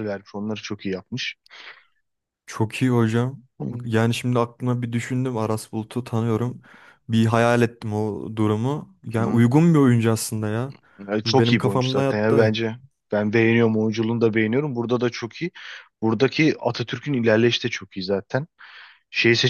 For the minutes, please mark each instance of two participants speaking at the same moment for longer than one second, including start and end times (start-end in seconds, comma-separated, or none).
11.2-12.5